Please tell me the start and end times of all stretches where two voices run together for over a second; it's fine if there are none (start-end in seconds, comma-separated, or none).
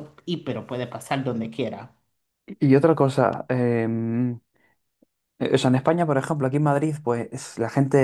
none